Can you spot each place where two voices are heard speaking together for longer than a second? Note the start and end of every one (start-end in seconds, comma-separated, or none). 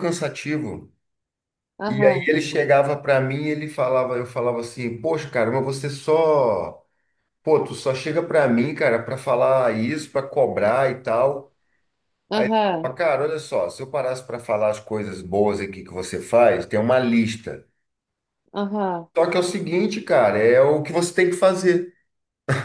none